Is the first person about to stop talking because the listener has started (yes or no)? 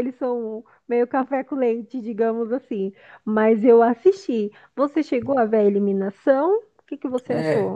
yes